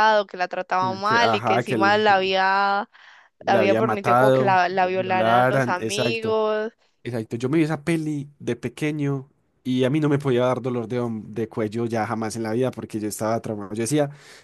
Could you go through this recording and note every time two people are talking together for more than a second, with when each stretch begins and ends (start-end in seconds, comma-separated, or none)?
0.8-2.0, 3.5-6.4